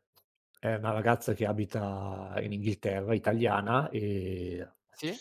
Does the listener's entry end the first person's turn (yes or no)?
no